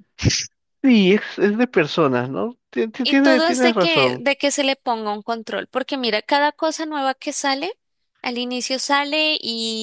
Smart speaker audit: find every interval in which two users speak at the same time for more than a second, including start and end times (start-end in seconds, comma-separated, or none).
3.0-4.2